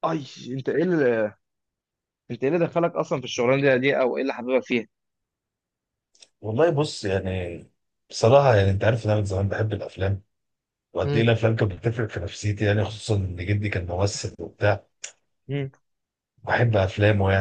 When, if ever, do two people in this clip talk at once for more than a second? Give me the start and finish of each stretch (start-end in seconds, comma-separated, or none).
none